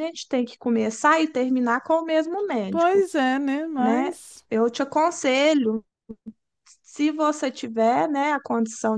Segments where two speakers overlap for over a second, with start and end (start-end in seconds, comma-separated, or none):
none